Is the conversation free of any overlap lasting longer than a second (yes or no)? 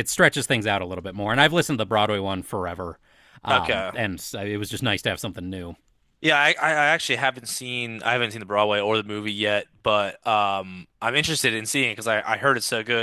yes